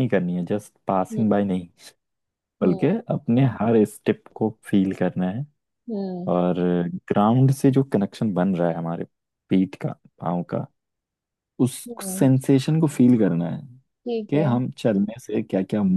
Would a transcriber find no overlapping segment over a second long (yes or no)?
yes